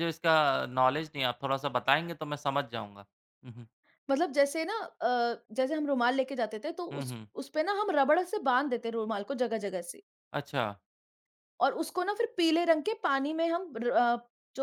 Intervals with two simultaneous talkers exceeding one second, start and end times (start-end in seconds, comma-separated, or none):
none